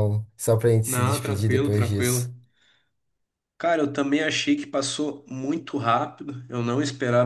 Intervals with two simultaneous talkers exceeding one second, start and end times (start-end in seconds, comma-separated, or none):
0.8-2.3